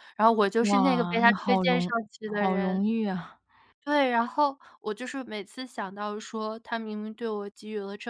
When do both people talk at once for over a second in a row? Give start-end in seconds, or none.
0.6-2.8